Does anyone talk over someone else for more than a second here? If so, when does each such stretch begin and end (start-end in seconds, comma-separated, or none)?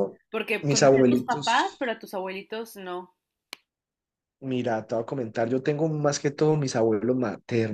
0.6-1.9